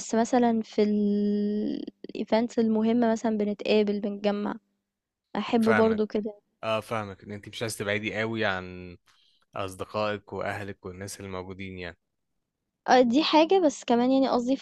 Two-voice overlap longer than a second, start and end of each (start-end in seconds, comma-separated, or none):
none